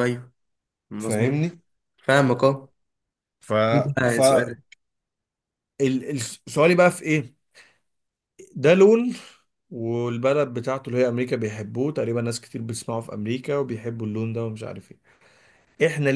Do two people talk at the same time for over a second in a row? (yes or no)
no